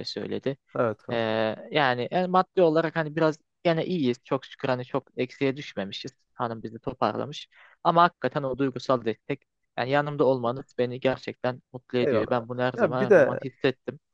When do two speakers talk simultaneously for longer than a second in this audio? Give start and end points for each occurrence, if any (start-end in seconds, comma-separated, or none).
12.0-13.4